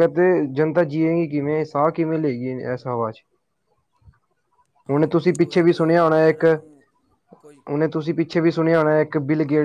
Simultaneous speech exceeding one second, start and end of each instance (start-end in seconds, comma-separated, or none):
5.0-6.5